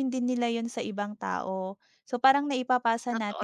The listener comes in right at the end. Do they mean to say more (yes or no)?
no